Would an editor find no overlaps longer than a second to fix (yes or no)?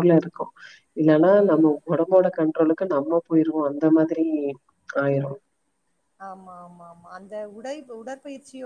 yes